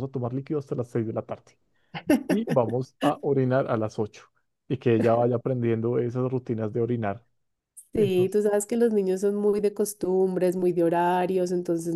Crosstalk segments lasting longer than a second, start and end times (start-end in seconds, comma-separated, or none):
none